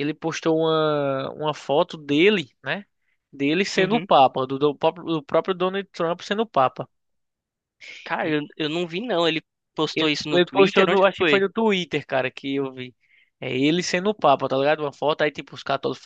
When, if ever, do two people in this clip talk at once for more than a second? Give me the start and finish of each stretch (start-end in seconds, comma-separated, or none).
9.9-11.4